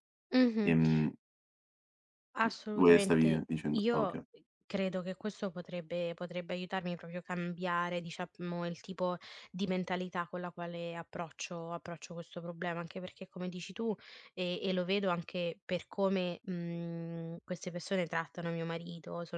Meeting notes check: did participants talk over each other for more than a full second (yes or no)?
yes